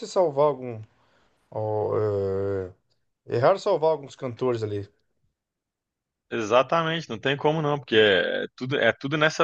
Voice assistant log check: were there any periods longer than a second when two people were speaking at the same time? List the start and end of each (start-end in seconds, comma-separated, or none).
none